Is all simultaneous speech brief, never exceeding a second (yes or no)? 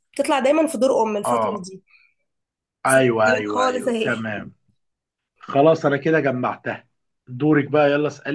no